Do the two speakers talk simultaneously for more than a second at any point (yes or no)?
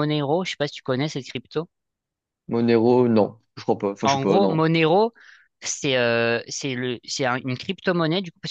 no